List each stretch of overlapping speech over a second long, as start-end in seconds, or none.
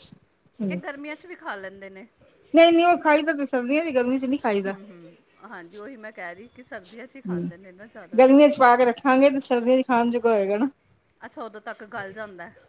none